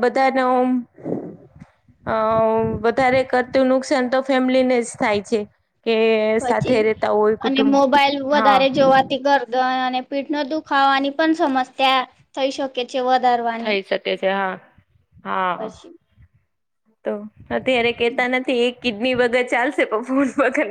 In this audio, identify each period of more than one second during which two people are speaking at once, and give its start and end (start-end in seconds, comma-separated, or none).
none